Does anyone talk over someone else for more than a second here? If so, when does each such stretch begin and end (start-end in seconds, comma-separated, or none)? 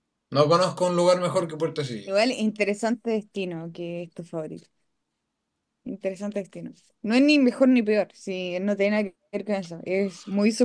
none